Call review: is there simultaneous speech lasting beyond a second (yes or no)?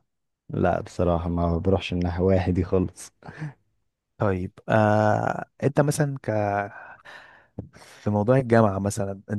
no